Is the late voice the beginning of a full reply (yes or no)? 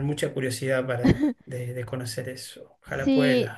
yes